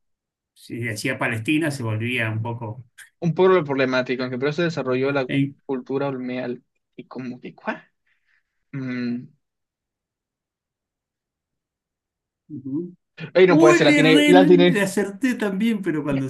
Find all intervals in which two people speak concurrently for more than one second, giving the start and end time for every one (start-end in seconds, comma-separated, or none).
13.5-14.8